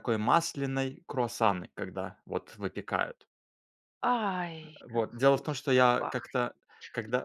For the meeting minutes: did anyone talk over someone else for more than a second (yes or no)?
yes